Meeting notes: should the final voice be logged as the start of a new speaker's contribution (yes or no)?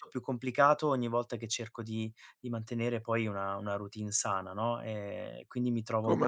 no